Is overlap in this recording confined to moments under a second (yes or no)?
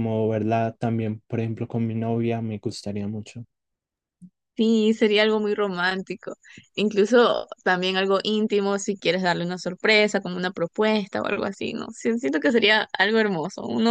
yes